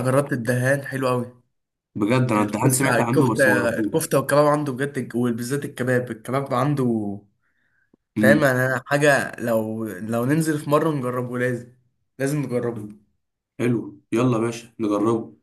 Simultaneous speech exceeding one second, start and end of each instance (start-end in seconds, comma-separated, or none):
2.4-4.2